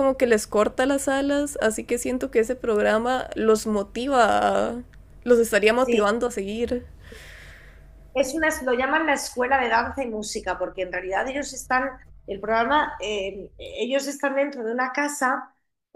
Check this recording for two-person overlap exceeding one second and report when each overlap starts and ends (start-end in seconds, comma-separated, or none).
none